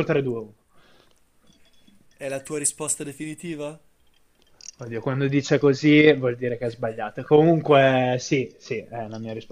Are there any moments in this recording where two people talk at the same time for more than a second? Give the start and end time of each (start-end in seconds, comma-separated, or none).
none